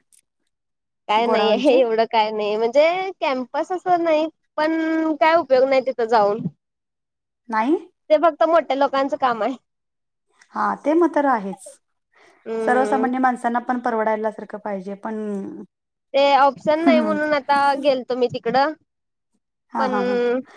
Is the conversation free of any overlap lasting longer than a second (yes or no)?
yes